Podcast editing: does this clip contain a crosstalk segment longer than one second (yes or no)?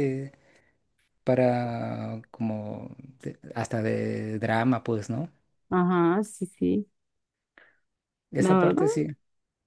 no